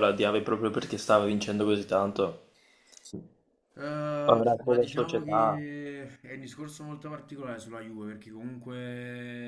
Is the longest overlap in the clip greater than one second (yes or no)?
yes